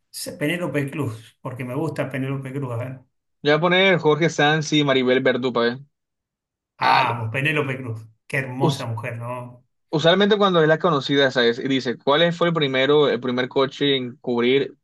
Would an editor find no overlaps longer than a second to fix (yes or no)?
yes